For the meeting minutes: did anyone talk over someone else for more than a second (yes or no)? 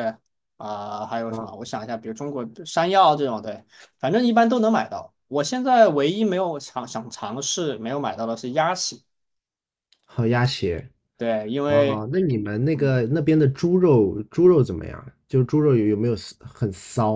no